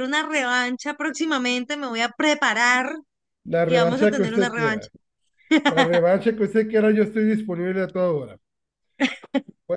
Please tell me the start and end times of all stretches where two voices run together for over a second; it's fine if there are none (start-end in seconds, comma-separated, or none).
3.6-4.9